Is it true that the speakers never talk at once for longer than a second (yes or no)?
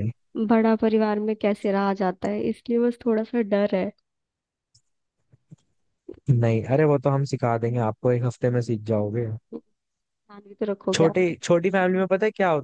yes